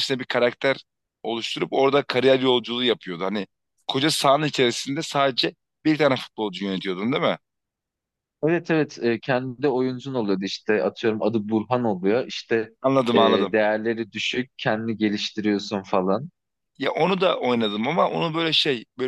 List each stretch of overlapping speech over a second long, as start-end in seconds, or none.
none